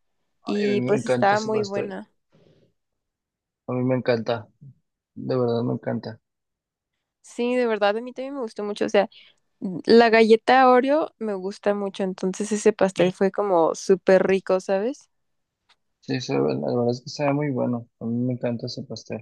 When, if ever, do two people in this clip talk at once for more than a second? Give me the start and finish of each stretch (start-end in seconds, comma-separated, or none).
0.5-1.9